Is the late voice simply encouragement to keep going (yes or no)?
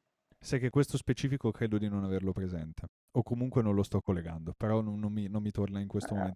yes